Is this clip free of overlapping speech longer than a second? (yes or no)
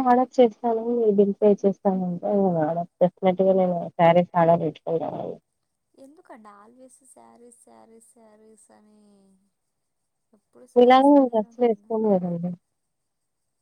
no